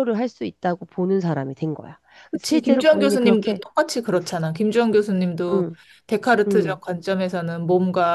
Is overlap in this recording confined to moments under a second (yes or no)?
no